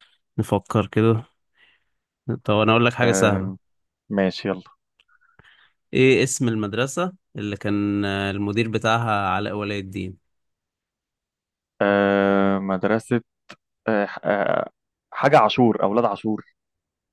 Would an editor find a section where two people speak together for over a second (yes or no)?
no